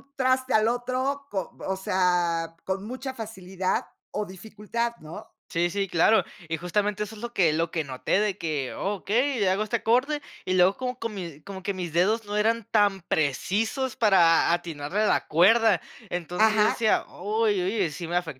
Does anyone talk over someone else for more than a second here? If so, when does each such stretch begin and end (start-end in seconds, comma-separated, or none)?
none